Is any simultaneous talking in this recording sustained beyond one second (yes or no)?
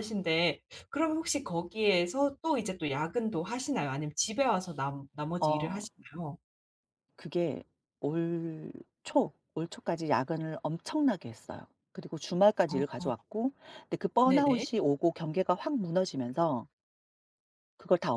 no